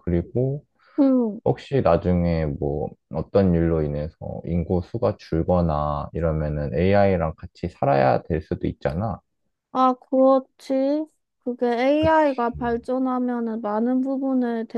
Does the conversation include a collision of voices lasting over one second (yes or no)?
no